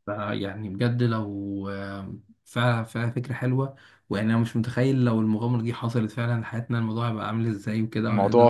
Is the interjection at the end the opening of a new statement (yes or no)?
no